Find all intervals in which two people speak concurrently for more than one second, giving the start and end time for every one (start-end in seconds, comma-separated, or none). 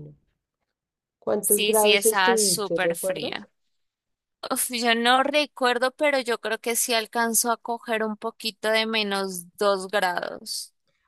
1.4-3.5